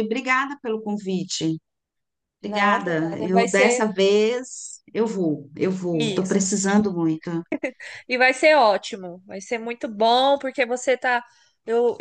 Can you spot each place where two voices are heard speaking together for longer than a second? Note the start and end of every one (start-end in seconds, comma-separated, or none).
2.4-3.9